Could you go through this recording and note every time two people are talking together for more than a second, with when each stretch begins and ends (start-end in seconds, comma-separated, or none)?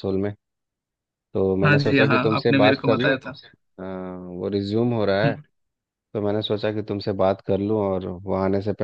1.6-3.1